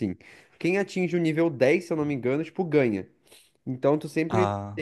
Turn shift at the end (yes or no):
no